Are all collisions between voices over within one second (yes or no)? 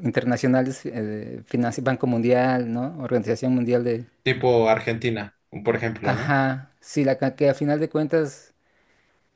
yes